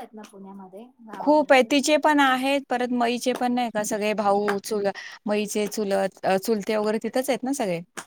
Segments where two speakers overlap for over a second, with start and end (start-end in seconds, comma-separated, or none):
none